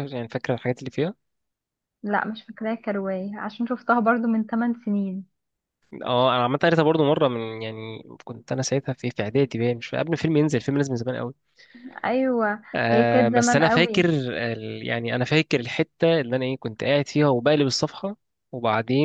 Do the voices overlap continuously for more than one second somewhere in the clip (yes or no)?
yes